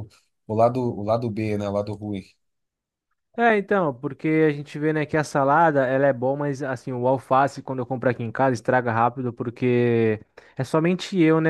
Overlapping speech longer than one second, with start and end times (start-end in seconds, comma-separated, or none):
none